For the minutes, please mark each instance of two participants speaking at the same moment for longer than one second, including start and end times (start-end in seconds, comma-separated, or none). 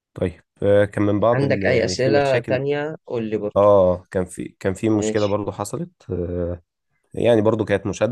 1.3-2.6